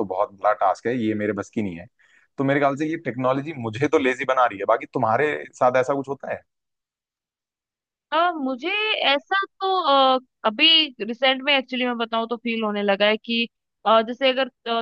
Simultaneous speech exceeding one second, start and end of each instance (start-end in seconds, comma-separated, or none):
none